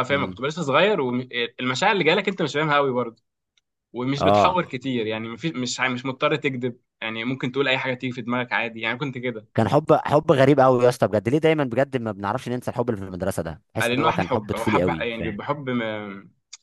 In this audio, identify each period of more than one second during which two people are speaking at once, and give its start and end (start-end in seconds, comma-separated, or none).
13.8-15.4